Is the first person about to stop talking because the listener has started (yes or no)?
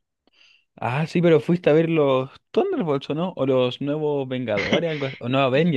yes